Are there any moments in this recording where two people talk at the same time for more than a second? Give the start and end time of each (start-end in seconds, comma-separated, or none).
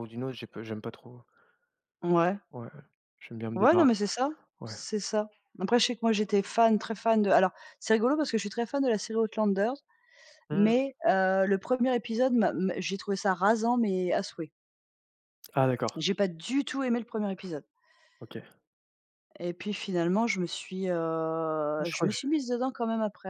none